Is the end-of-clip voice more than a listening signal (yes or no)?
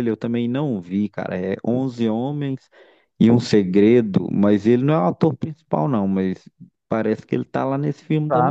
yes